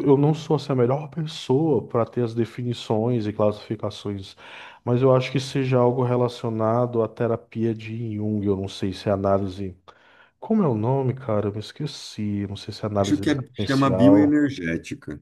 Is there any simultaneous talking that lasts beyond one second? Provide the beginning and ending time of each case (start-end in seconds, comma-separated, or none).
13.0-14.4